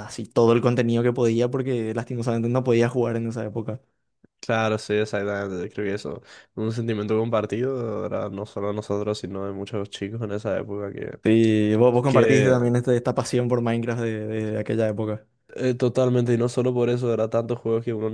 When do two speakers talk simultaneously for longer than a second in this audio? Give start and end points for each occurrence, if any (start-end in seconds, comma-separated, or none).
none